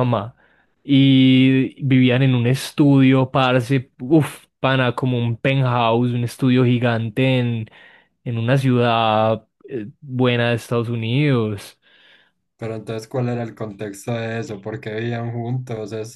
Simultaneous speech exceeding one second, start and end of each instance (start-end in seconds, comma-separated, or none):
none